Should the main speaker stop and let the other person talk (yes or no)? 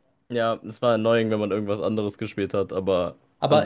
yes